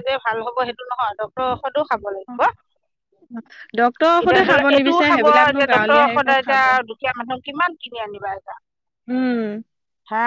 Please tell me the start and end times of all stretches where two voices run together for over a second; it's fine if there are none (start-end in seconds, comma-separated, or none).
4.2-6.6